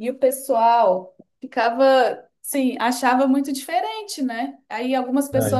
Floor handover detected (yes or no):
no